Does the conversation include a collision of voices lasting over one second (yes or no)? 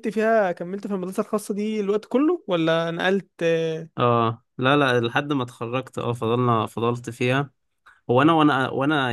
no